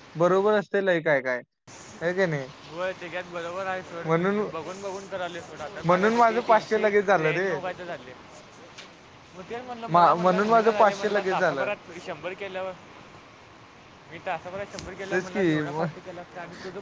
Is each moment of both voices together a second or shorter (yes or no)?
no